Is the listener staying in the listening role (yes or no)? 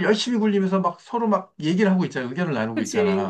no